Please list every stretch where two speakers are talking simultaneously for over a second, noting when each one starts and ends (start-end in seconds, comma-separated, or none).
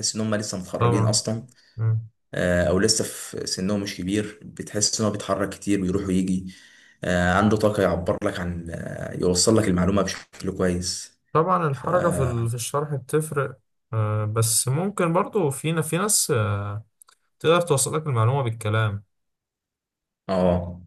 none